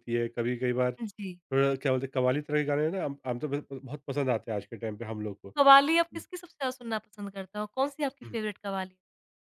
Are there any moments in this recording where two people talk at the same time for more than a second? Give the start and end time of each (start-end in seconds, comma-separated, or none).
none